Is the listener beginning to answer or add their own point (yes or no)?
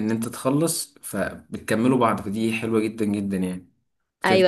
yes